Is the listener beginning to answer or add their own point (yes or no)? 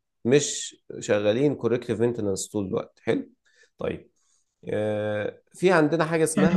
yes